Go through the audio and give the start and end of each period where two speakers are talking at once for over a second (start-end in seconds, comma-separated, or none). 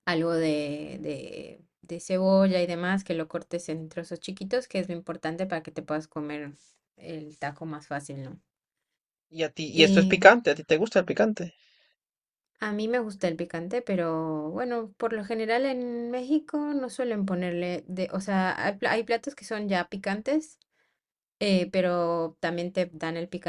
none